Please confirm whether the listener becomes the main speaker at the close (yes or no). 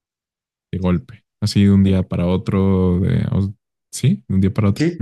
yes